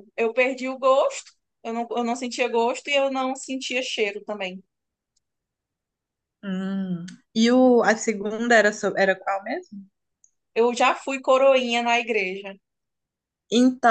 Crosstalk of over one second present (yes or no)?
no